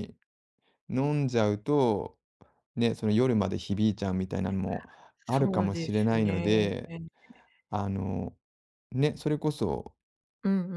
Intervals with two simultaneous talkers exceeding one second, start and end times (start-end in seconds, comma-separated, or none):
5.3-6.7